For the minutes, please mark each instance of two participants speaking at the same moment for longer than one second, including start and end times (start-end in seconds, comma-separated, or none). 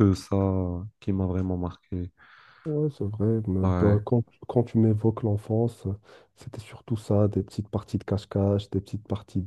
none